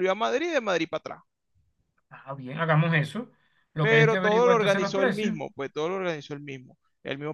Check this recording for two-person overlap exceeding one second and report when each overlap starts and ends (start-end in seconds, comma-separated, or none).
3.8-5.4